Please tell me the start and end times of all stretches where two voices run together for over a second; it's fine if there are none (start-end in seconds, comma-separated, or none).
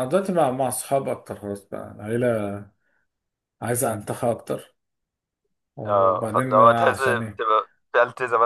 5.9-7.4